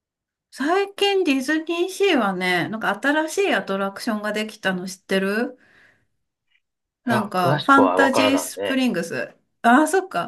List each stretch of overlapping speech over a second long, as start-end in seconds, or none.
7.0-8.8